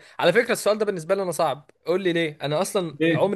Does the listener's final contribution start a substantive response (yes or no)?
no